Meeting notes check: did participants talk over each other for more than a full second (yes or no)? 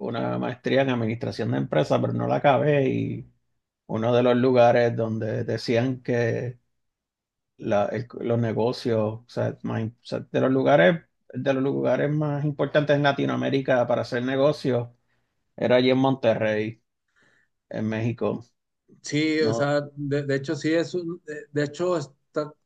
no